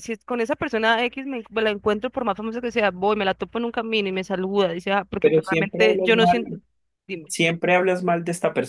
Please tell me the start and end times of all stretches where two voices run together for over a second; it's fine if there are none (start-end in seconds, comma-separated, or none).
5.2-6.6